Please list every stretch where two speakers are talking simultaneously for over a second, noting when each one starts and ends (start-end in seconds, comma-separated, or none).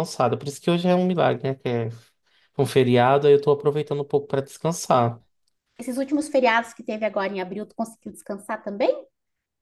none